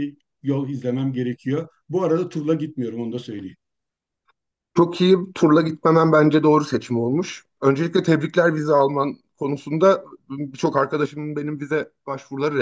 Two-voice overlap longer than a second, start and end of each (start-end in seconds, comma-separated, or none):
none